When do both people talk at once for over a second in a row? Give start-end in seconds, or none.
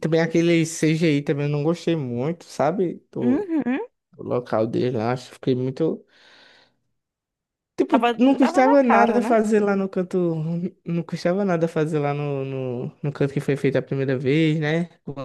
7.9-9.4